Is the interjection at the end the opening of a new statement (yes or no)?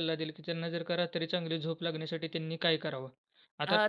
yes